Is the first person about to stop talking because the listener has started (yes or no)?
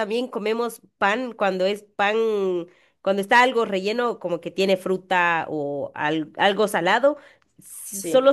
no